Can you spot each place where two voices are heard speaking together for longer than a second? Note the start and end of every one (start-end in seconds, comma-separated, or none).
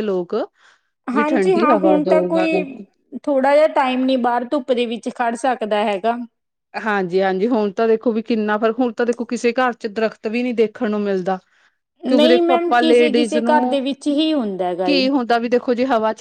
1.1-2.6, 12.1-13.8